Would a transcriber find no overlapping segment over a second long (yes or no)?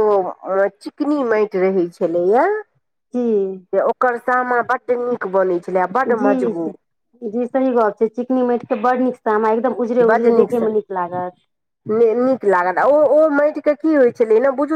yes